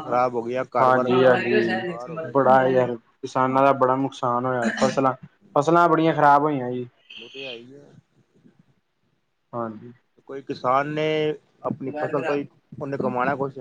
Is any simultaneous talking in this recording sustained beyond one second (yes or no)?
yes